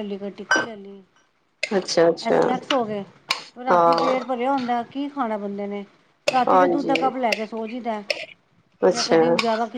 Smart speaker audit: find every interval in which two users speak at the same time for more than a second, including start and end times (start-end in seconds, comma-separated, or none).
none